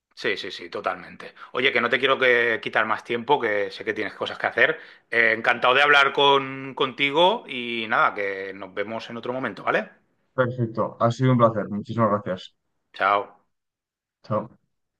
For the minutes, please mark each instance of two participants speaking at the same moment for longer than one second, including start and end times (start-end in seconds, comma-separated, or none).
none